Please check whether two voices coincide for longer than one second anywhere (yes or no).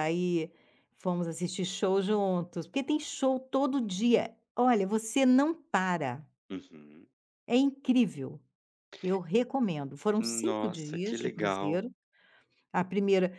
yes